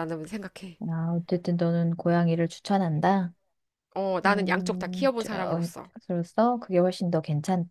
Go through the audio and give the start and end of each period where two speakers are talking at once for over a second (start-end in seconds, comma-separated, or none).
4.2-5.7